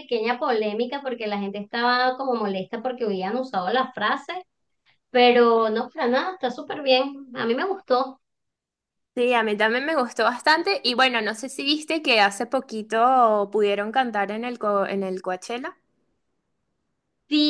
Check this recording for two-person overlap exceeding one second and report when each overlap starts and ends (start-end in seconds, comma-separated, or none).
none